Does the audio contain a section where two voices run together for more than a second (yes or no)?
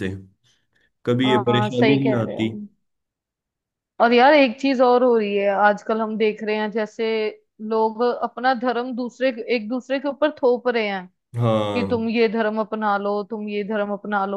yes